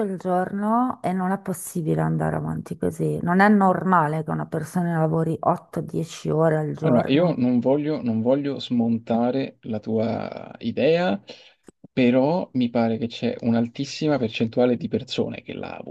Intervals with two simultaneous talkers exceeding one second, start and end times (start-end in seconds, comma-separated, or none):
none